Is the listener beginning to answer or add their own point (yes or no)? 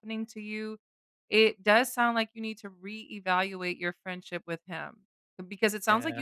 no